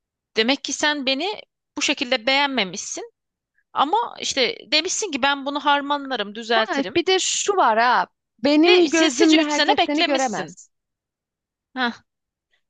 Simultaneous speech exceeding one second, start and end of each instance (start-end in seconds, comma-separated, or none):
8.6-10.6